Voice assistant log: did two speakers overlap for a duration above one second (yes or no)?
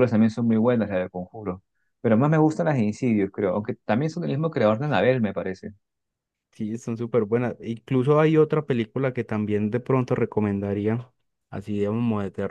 no